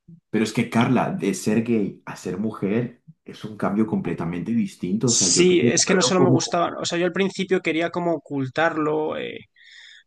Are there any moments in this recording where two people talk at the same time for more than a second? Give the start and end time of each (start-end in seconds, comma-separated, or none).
5.0-6.7